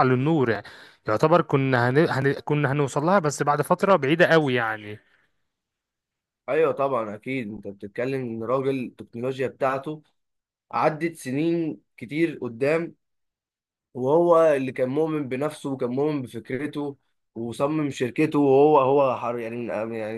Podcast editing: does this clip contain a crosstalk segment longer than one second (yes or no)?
no